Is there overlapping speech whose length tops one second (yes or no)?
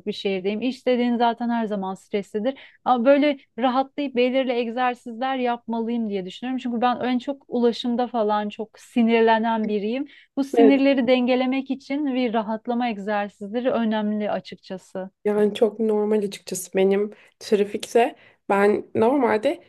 no